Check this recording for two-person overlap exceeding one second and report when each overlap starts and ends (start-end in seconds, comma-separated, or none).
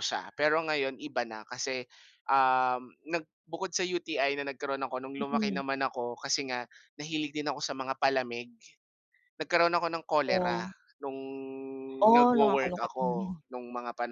12.1-13.4